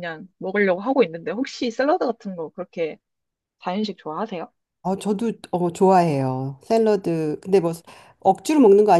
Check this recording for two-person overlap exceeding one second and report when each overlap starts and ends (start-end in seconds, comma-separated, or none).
none